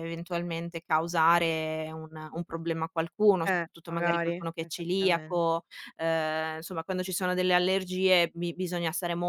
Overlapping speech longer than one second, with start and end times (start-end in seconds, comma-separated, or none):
3.5-5.5